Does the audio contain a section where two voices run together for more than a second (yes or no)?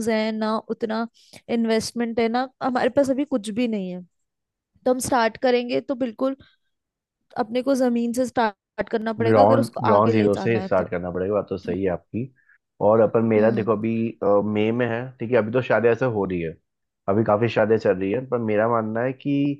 yes